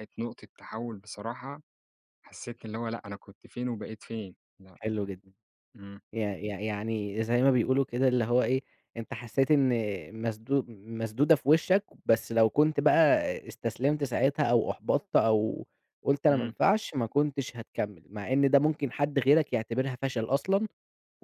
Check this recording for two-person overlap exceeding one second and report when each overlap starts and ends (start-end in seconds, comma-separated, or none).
none